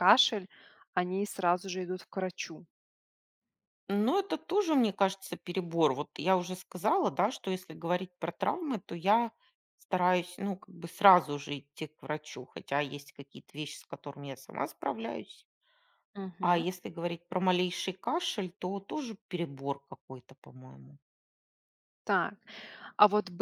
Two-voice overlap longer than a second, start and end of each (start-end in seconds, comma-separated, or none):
none